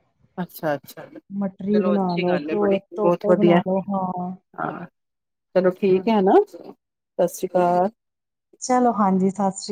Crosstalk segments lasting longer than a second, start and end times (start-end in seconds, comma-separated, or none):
1.9-4.3